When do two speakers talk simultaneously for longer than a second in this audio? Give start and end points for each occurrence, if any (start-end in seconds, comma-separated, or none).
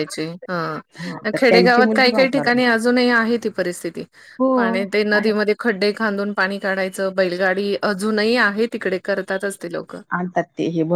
1.3-2.7